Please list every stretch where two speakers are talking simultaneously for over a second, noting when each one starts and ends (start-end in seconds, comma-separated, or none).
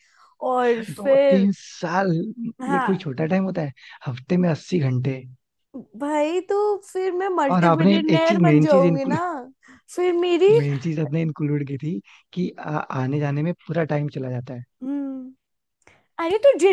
7.5-9.2